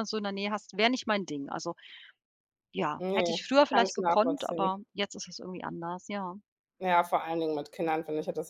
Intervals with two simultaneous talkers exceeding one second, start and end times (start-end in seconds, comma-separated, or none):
3.0-4.7